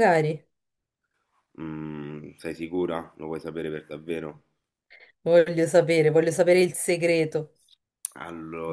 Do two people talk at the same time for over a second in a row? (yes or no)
no